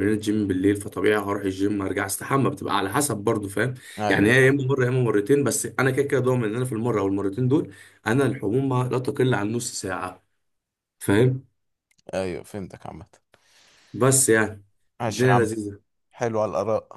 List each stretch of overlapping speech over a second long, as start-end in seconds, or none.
none